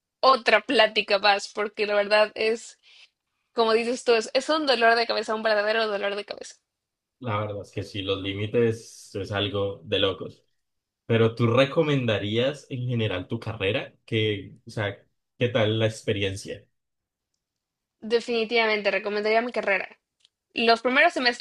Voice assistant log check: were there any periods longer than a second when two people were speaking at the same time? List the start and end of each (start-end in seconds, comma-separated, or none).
none